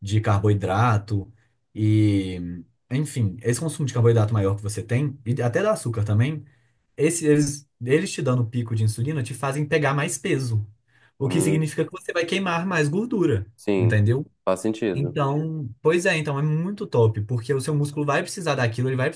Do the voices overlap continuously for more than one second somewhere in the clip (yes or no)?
no